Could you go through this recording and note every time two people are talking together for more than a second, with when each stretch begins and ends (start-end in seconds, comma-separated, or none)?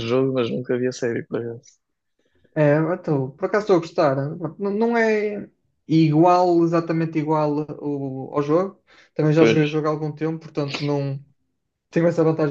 none